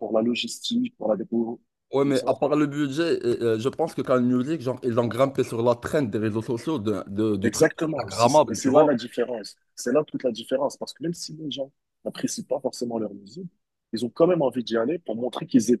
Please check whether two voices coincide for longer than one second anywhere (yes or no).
yes